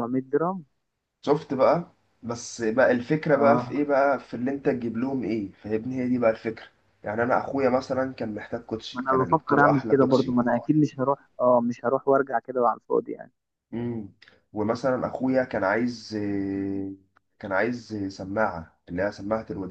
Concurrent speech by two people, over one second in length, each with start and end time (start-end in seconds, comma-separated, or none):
8.9-10.3